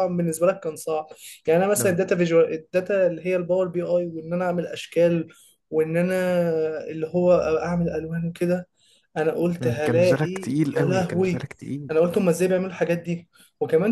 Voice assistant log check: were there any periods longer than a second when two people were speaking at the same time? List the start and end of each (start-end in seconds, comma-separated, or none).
9.6-11.5